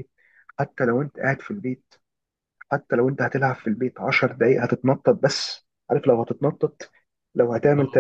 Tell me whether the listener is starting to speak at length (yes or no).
no